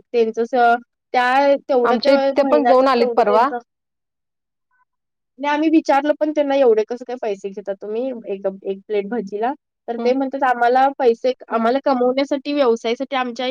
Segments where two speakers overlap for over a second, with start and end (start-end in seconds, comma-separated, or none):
1.9-3.5